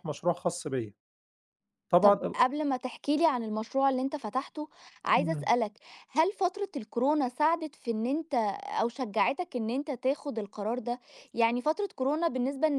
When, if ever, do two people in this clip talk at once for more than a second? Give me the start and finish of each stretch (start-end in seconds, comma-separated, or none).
none